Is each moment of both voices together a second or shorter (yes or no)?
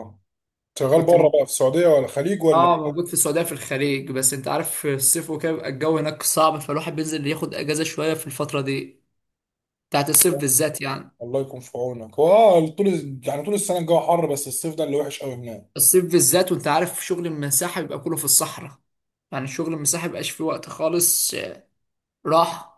yes